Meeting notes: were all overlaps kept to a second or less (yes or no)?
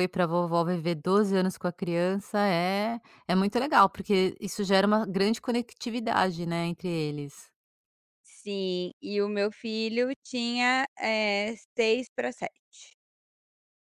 yes